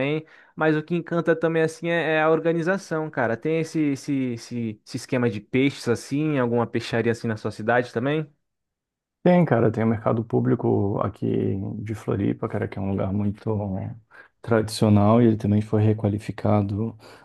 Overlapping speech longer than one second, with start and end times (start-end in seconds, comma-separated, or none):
none